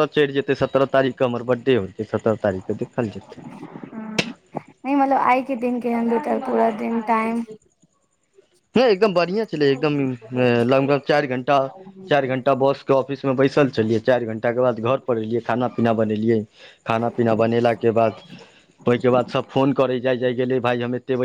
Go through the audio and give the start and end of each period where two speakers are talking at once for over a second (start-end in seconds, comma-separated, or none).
none